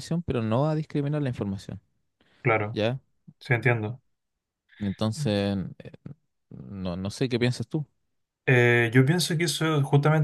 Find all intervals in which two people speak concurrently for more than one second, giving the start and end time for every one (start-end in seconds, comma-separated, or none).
none